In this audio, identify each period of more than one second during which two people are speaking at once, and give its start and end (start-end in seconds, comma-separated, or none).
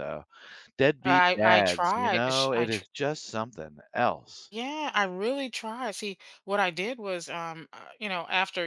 1.0-2.9